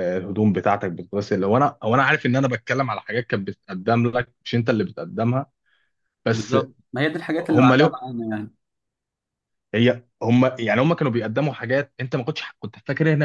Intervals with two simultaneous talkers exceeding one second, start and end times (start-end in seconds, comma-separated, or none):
none